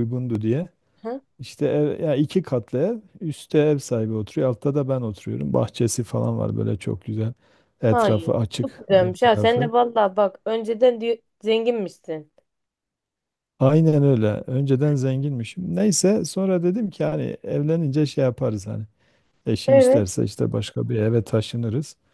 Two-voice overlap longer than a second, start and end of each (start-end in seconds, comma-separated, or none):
7.9-9.7